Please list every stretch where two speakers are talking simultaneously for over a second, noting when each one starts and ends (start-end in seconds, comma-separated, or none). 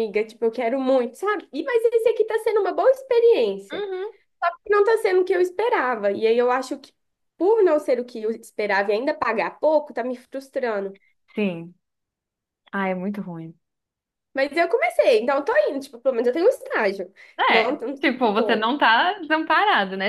17.5-18.7